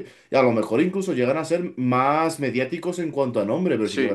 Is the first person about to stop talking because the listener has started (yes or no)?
no